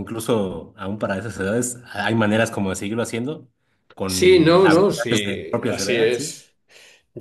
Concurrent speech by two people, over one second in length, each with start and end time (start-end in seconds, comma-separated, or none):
4.0-6.3